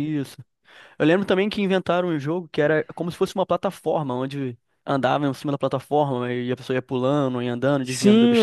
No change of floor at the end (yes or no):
no